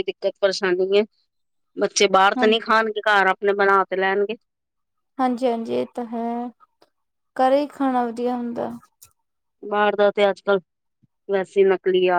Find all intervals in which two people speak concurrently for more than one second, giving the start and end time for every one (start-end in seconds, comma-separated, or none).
none